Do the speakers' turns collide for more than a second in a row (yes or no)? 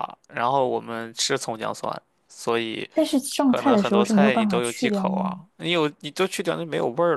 yes